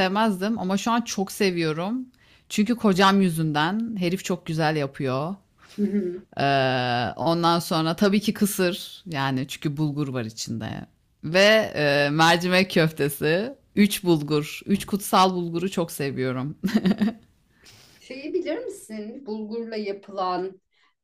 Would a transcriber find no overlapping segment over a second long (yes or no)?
yes